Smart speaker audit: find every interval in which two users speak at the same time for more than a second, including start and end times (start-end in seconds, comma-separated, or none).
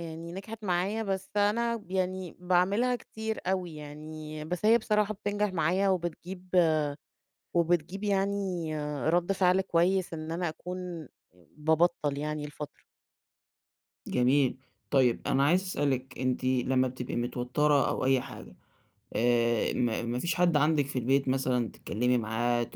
none